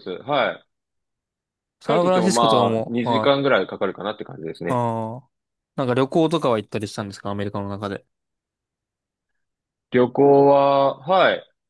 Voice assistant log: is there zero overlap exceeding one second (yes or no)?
no